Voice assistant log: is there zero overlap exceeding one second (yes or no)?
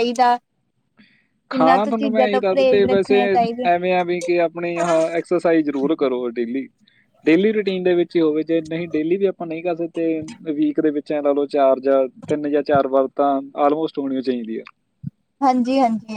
no